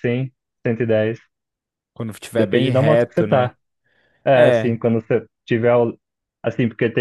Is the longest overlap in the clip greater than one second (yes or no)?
yes